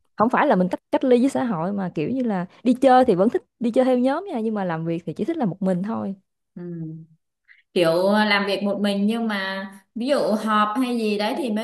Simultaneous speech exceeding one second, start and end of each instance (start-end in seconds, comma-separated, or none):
none